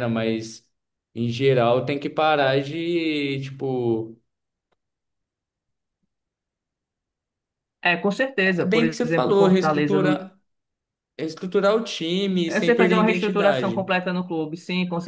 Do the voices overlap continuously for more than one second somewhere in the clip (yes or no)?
yes